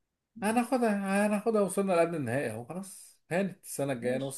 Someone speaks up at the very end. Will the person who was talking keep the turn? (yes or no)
yes